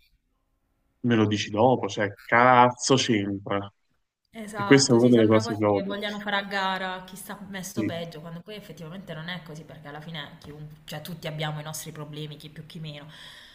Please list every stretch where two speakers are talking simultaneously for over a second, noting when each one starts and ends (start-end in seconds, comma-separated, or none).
4.5-5.9